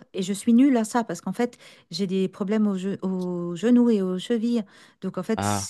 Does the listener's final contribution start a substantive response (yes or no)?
no